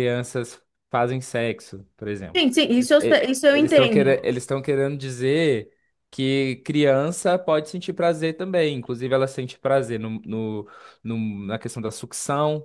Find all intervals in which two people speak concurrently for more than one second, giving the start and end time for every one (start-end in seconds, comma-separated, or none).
2.4-4.3